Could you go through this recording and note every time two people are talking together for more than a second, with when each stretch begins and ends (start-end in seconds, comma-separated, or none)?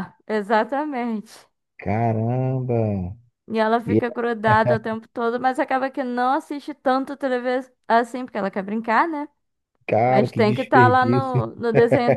10.0-11.5